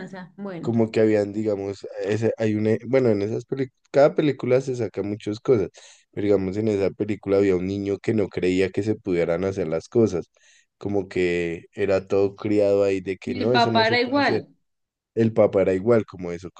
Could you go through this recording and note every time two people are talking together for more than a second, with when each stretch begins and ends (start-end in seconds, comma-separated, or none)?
13.2-14.4